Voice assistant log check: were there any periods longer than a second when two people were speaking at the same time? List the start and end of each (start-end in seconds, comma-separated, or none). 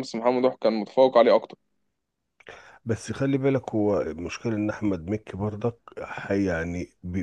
none